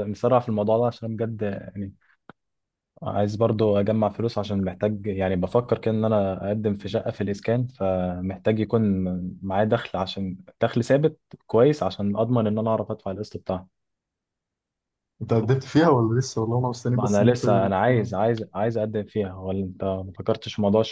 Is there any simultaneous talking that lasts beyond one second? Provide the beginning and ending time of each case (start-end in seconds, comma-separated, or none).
16.9-18.2